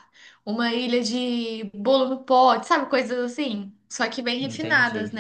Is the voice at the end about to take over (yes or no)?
no